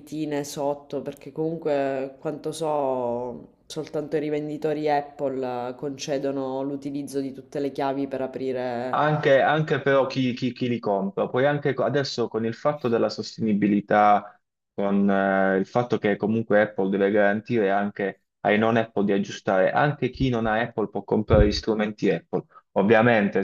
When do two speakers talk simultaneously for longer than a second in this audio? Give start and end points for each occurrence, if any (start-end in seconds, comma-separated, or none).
none